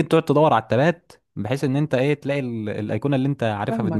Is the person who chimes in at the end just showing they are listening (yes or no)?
no